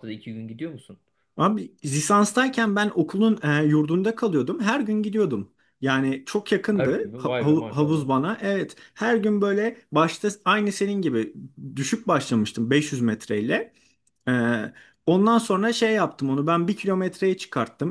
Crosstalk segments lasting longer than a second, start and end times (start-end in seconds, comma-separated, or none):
6.7-8.1